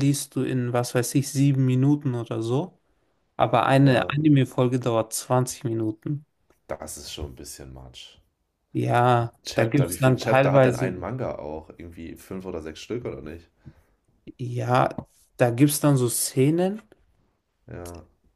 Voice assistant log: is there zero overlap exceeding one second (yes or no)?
no